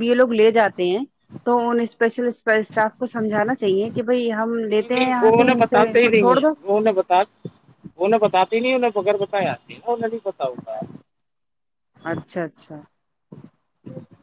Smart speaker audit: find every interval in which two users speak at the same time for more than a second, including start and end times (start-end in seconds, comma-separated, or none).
4.8-6.5